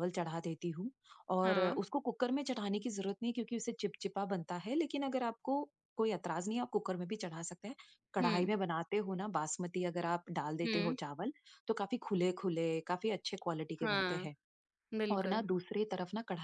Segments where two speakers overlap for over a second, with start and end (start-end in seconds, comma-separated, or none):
none